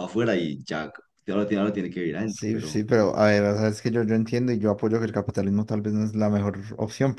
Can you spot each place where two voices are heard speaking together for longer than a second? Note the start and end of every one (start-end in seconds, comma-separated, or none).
none